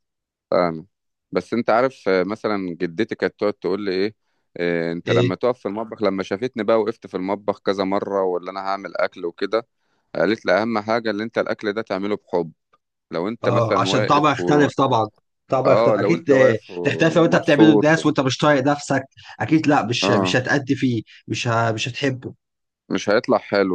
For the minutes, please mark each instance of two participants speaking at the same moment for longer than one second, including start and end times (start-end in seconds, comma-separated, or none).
13.4-14.7, 15.7-18.1